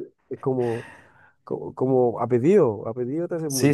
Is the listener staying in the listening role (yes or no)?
no